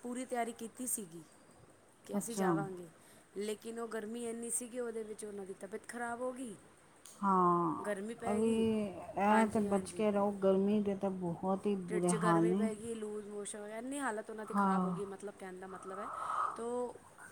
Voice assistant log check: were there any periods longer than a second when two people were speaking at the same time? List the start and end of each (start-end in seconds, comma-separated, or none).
none